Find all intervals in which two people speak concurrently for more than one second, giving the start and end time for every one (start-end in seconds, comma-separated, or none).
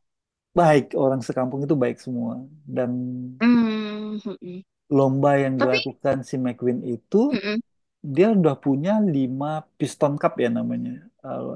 none